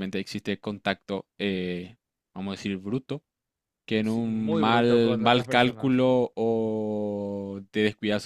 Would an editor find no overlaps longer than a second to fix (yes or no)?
no